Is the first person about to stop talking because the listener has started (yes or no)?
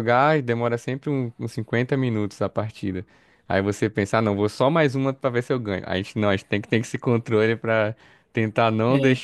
no